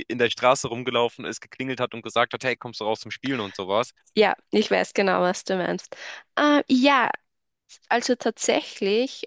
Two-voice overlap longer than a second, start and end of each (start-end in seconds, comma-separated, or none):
none